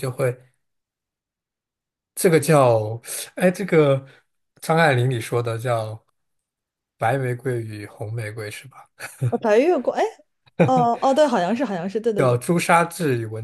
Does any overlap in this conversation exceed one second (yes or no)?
no